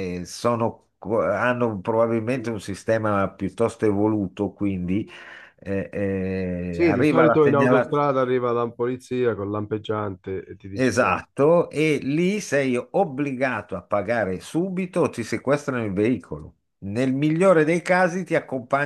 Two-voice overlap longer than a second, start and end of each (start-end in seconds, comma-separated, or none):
6.7-8.1